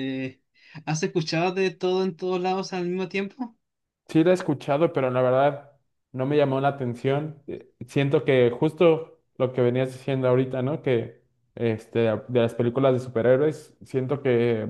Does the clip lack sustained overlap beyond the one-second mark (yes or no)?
yes